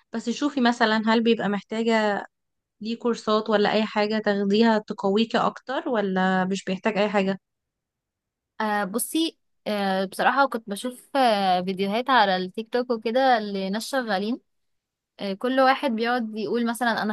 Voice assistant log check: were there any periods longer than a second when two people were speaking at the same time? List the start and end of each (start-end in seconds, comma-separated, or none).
none